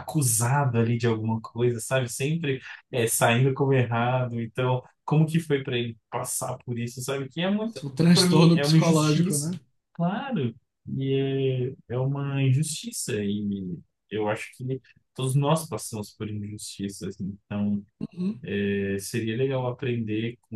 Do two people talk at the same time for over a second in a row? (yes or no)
yes